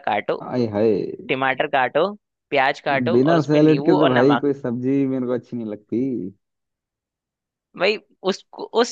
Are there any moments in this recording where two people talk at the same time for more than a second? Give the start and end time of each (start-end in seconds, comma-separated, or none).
3.1-4.4